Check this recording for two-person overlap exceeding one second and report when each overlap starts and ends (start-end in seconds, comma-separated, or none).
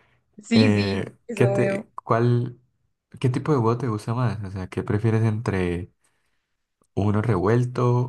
0.5-1.9